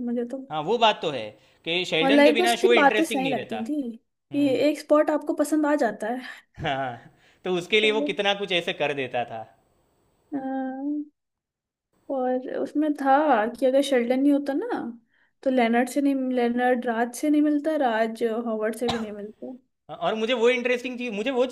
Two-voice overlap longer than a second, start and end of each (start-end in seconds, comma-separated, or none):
2.0-3.7